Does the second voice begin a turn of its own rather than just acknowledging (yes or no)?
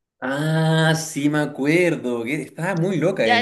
yes